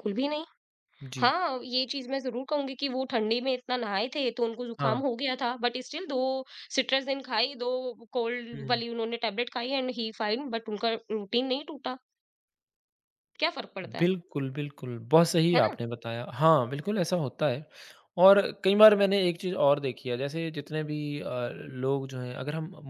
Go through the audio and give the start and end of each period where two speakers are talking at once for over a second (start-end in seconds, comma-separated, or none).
none